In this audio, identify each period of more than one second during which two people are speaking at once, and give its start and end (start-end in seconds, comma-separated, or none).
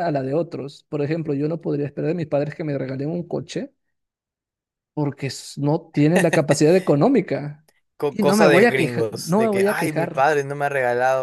8.1-10.3